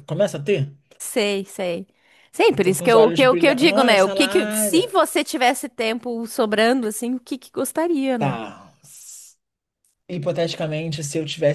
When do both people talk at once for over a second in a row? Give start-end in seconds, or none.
2.5-4.9